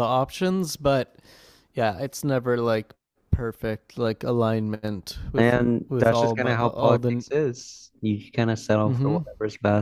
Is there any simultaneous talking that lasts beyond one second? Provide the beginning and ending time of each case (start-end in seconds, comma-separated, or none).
5.4-7.2